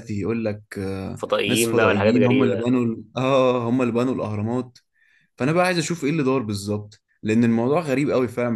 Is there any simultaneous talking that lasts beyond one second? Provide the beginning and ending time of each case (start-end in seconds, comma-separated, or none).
1.1-2.6